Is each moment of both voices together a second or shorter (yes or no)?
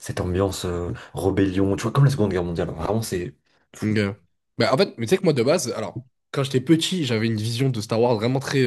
yes